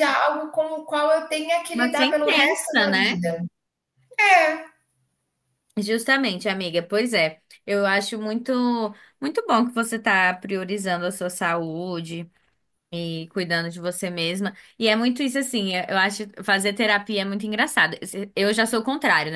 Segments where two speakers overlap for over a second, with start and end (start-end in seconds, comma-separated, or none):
1.7-3.2